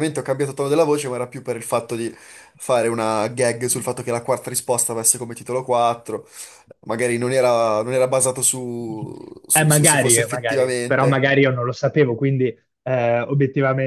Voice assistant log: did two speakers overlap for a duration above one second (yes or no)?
yes